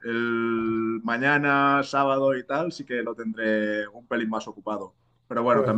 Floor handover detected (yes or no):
no